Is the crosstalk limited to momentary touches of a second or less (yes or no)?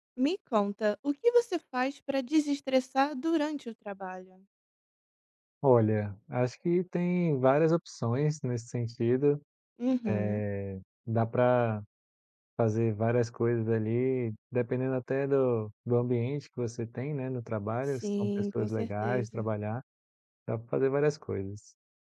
no